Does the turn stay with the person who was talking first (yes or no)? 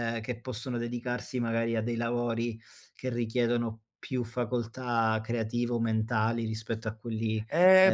no